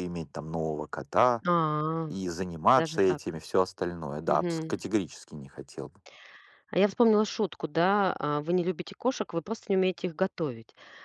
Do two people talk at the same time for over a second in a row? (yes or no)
no